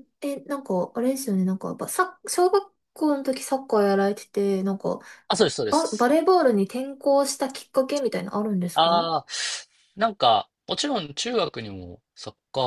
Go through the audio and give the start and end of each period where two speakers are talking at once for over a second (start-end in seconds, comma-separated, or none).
none